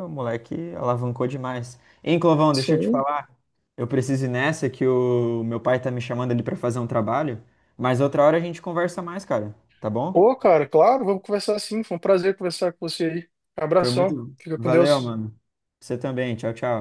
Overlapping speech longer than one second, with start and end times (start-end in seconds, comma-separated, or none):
13.8-15.2